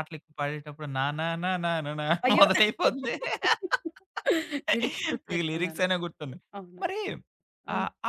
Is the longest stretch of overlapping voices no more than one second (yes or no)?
yes